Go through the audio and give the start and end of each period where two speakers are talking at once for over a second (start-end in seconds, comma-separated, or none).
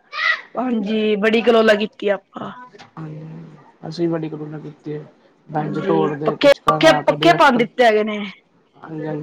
5.6-7.7